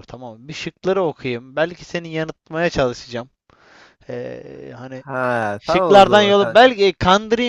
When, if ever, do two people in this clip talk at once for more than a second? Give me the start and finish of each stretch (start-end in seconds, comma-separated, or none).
5.6-6.8